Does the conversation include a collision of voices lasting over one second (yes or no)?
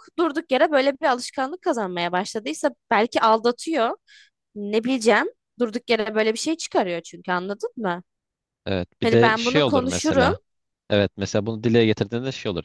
yes